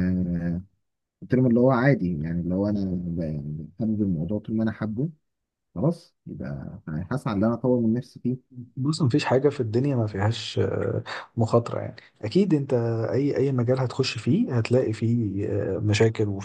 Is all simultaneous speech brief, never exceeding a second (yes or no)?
yes